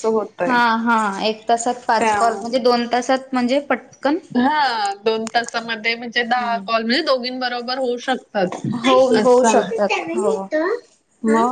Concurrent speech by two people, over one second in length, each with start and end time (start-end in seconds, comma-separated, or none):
none